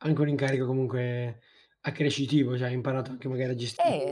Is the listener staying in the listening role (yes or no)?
no